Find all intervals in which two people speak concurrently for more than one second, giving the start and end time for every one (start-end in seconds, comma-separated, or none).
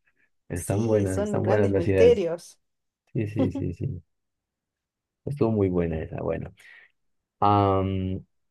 0.5-2.3